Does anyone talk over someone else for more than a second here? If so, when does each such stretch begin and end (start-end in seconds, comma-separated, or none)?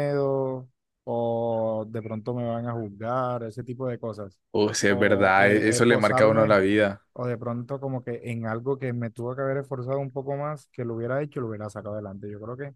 4.8-6.6